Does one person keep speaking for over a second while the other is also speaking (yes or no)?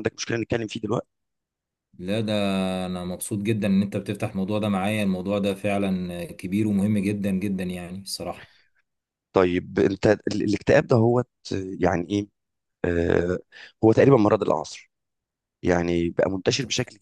no